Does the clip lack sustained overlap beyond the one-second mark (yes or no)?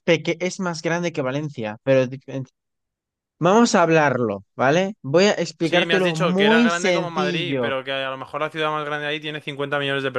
no